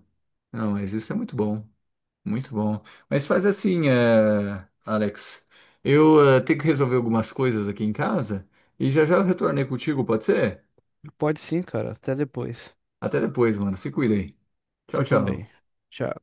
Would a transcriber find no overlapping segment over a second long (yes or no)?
yes